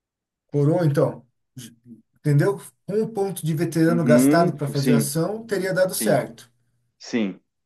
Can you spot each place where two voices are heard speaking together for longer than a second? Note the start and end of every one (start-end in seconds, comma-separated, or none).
3.9-5.1